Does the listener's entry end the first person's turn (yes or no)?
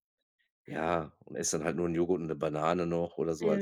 yes